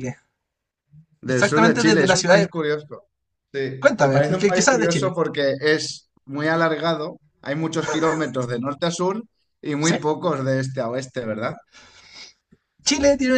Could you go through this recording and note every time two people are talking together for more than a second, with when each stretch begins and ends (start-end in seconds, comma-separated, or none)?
1.3-2.5, 3.8-5.2